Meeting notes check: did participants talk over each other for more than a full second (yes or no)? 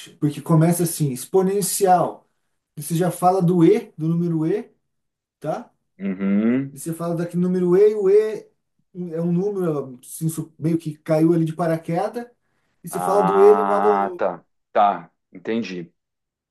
yes